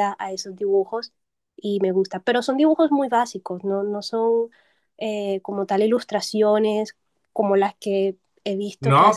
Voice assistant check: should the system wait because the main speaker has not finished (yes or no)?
no